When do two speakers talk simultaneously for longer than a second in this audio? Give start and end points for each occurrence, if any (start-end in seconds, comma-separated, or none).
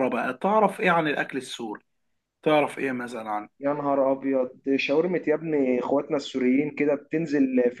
none